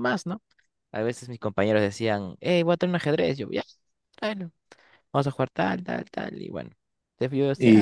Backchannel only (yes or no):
no